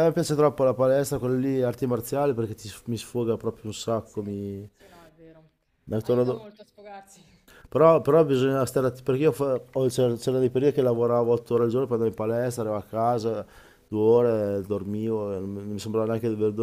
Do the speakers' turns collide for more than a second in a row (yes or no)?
no